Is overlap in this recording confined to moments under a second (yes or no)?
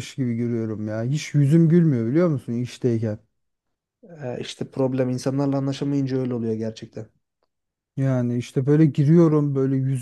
yes